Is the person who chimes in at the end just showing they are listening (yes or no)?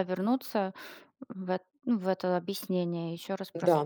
no